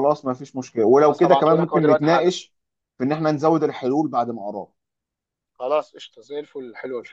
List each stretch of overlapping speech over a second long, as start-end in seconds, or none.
0.9-2.3